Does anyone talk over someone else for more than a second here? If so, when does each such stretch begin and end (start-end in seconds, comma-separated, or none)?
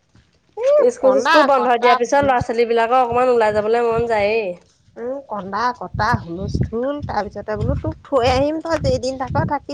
1.0-2.6